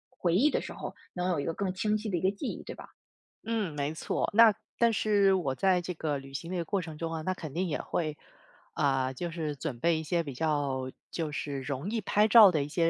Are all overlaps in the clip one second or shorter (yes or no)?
yes